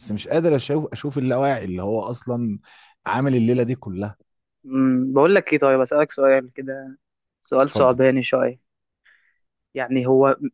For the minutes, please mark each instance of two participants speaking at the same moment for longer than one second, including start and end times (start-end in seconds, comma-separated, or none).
none